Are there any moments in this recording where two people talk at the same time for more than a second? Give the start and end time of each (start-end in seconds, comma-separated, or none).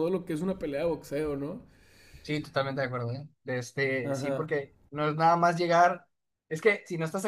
none